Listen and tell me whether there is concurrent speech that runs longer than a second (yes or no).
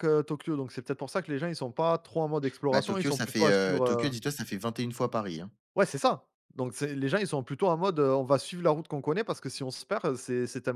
yes